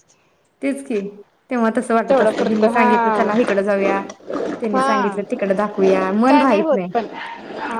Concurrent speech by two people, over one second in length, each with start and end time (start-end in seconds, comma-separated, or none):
2.1-3.5